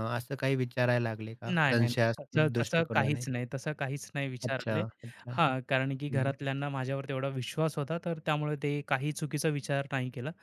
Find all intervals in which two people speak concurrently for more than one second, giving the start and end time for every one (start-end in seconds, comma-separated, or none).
1.5-3.2